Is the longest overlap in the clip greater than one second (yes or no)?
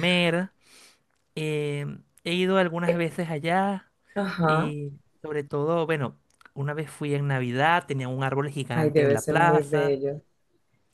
yes